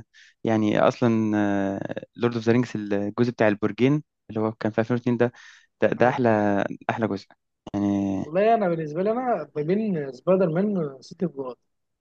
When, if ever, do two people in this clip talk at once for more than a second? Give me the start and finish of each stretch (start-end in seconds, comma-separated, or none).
none